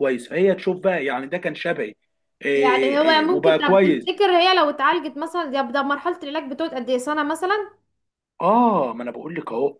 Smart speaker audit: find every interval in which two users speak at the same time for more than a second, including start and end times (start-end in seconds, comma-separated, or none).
2.6-4.1